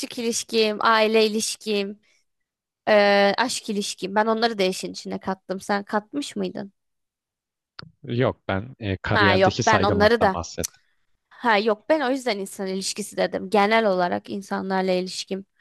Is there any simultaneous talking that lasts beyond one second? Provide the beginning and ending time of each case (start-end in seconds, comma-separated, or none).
9.1-10.4